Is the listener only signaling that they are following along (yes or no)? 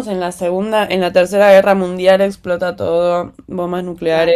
no